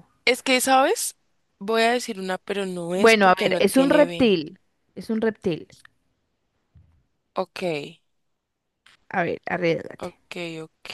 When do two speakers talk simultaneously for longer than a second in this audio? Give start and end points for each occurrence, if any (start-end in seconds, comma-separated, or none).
3.0-4.3